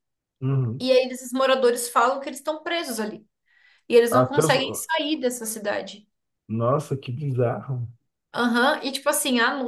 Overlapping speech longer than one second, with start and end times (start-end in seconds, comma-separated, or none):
none